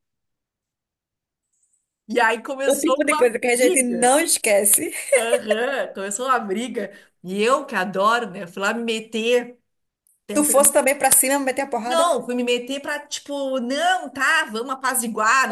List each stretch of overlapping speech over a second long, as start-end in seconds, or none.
2.7-4.1